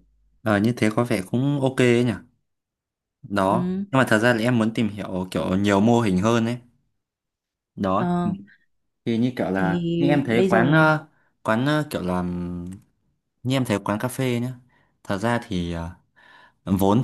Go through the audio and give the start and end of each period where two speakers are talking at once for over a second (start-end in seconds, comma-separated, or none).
9.5-10.9